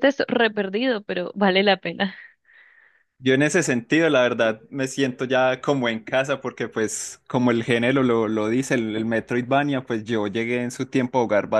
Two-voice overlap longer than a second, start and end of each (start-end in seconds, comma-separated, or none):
none